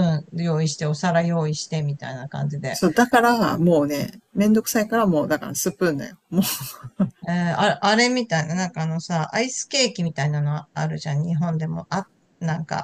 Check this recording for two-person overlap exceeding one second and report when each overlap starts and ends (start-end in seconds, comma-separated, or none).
none